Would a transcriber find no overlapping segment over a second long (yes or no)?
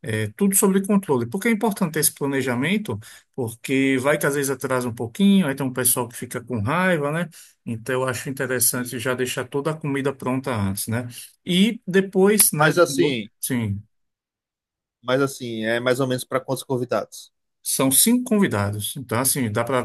yes